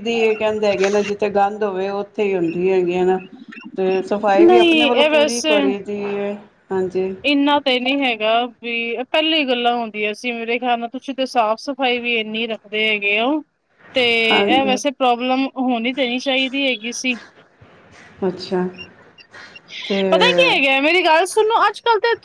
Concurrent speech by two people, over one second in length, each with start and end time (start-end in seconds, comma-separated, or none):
none